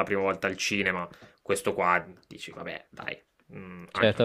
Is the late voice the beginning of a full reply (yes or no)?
yes